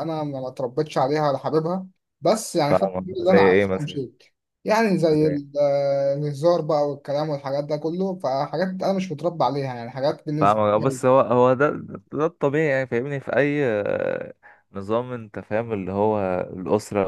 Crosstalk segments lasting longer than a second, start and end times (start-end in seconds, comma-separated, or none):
2.7-4.0